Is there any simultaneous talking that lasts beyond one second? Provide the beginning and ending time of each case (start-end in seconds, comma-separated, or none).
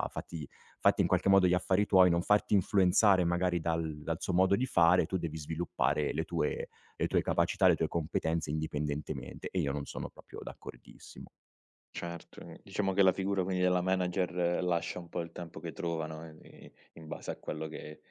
none